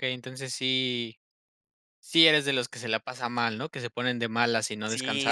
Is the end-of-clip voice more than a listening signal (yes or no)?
yes